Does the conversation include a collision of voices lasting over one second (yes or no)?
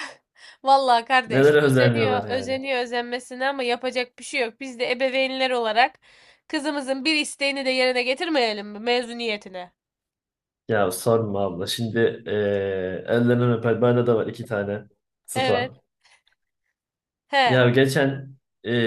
yes